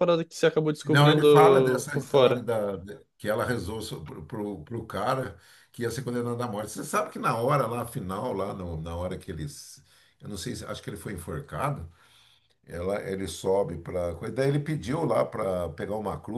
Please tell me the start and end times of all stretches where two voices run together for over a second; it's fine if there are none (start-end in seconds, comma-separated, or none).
0.8-2.5